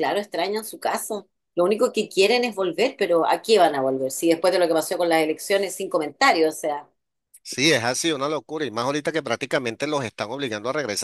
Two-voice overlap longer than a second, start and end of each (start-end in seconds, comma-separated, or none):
none